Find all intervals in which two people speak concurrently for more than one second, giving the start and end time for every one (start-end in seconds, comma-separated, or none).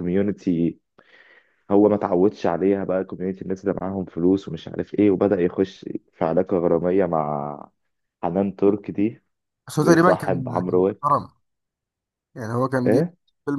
9.8-11.2